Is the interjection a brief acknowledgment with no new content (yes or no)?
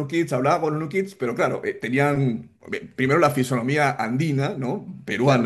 yes